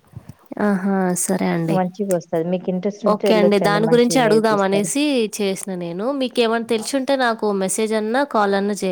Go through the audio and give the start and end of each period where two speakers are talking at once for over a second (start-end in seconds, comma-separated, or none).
3.1-4.9